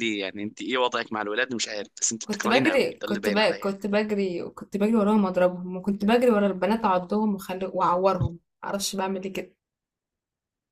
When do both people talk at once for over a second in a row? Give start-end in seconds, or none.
2.2-3.7